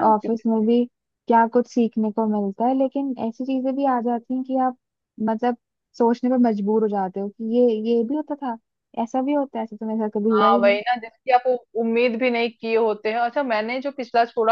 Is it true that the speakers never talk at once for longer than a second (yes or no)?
yes